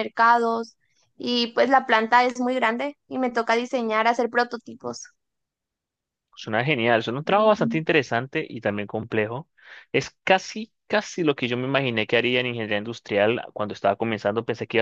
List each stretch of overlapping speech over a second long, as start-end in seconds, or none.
none